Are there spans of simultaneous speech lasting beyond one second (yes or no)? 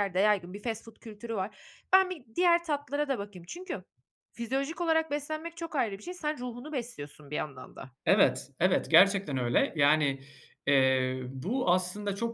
no